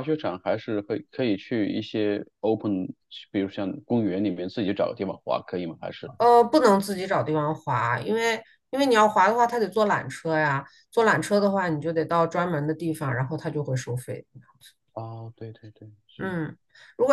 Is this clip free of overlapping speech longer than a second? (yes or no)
yes